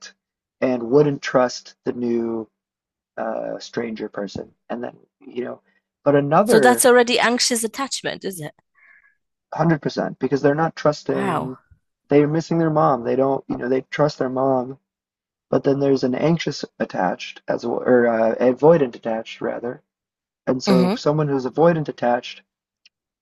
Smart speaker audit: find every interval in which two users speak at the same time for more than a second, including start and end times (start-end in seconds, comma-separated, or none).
none